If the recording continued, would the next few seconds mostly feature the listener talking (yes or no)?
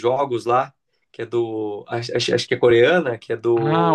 yes